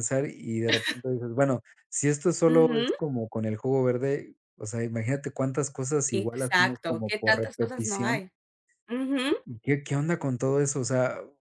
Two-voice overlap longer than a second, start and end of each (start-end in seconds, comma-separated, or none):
6.1-8.2